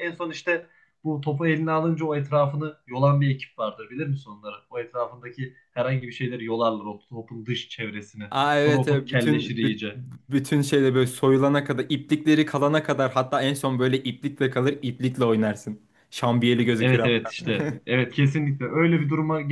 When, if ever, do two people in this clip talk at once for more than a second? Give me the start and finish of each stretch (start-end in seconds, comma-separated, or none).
8.3-9.8